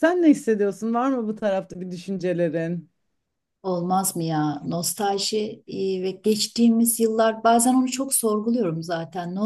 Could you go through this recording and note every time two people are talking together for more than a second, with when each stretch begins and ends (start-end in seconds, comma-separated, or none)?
none